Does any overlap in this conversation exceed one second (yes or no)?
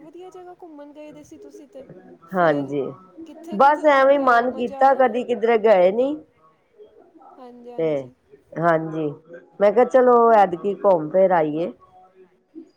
yes